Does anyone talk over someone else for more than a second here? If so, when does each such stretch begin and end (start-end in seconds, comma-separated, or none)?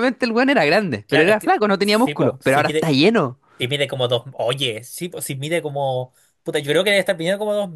1.1-2.9